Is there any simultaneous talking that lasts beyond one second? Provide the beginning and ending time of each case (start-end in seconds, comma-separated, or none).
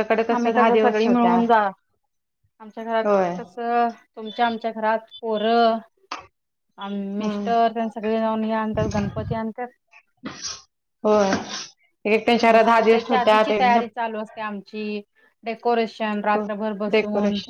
none